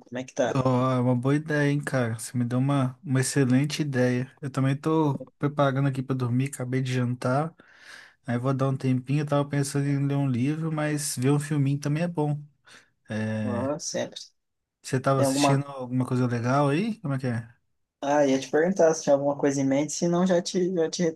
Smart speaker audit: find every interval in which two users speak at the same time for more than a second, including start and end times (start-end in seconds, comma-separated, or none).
none